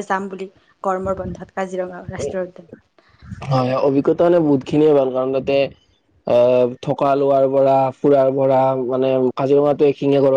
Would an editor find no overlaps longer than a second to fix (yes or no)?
yes